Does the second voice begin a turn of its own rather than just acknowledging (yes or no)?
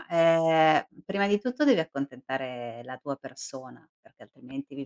yes